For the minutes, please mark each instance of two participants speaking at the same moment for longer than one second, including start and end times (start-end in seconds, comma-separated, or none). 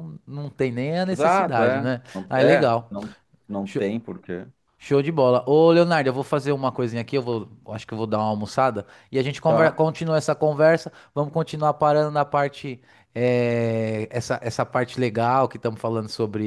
1.1-3.0